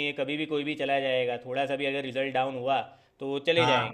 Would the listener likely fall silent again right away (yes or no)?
yes